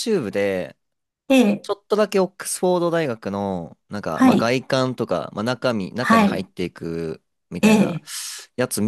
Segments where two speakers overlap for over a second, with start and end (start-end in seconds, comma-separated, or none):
none